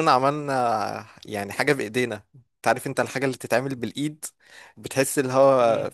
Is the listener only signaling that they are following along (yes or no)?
no